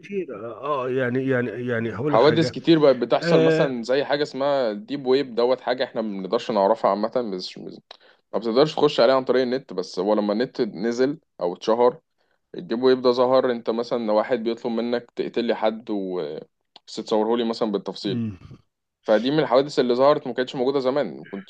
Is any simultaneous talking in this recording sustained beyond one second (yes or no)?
no